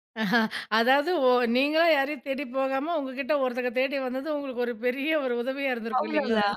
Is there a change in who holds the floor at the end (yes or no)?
yes